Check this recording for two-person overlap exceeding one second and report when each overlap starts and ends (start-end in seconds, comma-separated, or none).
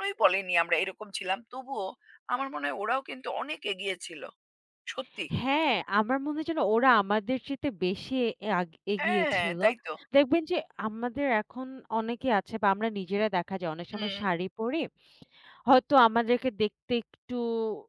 none